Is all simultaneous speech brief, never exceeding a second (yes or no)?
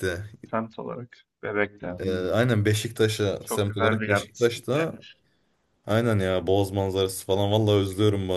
no